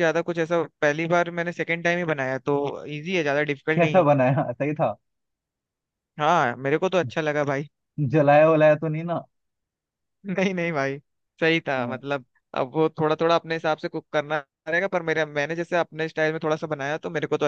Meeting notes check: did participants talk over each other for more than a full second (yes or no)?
no